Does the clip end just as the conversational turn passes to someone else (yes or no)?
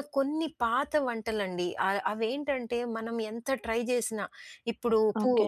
no